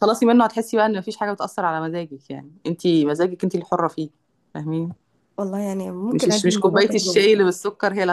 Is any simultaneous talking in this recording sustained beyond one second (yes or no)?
yes